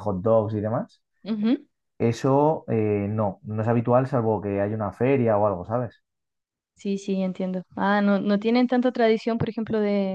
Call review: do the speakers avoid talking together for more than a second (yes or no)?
yes